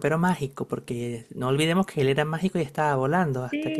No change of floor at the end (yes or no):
yes